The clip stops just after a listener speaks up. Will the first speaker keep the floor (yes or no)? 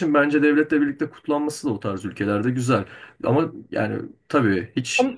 yes